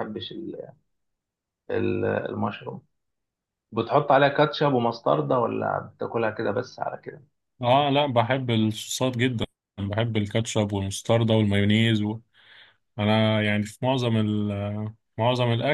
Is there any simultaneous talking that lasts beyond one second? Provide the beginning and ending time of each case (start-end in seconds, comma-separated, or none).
none